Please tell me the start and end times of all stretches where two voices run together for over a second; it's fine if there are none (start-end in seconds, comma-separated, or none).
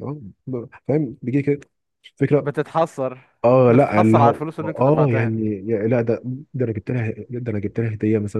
3.7-5.3